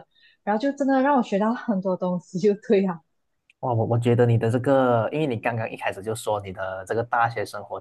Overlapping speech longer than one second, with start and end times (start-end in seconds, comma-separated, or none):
none